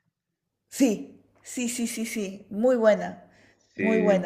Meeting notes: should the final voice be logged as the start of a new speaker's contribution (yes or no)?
no